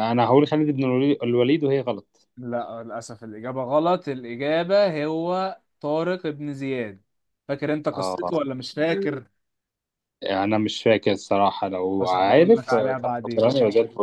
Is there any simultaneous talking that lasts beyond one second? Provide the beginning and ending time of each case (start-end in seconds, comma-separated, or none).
12.0-13.5